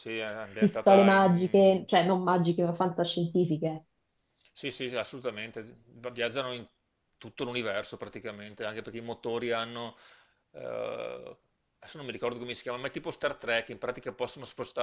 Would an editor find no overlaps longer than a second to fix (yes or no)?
no